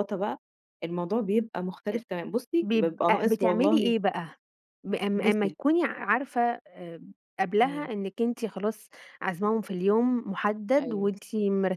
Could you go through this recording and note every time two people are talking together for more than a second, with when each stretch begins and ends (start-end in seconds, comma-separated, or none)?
2.6-3.9